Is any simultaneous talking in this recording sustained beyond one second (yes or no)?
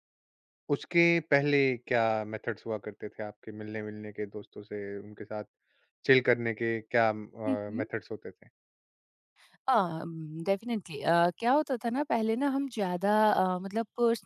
no